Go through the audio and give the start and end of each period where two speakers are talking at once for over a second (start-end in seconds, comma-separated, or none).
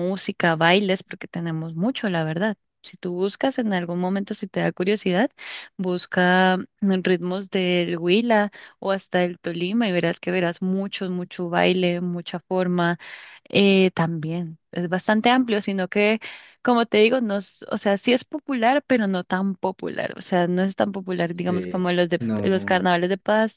21.3-22.9